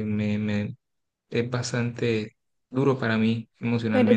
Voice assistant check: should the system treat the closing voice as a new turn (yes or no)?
yes